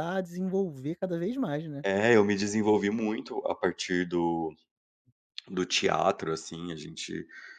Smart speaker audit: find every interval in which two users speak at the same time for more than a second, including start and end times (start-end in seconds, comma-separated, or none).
none